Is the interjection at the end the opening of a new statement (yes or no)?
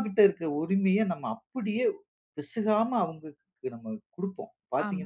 yes